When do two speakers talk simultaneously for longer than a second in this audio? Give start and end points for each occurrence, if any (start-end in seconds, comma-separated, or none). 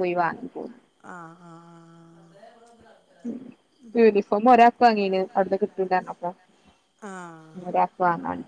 none